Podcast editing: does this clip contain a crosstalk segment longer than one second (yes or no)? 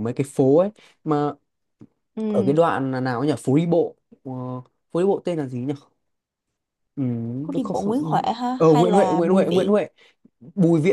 yes